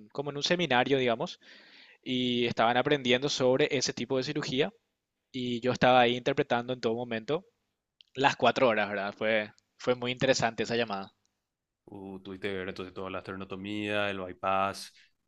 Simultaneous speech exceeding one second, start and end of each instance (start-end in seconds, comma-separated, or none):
none